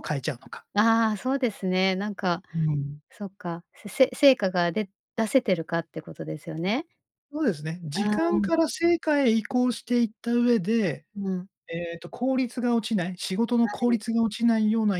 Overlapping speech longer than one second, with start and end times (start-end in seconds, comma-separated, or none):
none